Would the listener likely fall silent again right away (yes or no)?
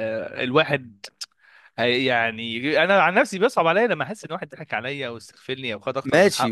no